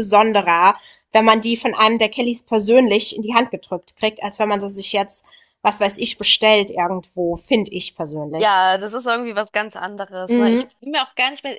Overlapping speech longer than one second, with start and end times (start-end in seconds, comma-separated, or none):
none